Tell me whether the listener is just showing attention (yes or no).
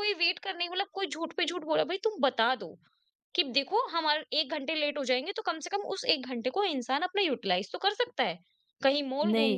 yes